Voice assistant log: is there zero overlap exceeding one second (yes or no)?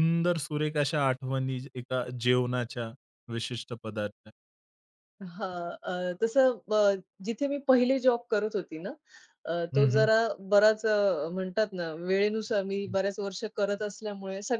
yes